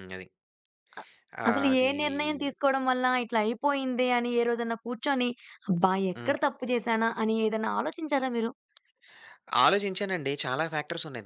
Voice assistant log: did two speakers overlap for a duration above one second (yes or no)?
no